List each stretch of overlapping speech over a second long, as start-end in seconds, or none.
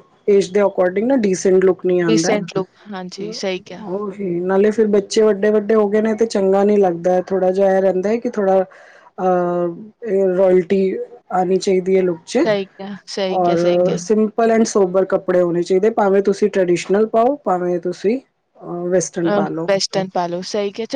none